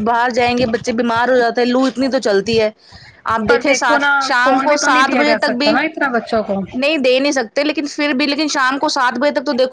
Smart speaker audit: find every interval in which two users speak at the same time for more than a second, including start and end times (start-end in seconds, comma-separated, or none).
3.5-5.7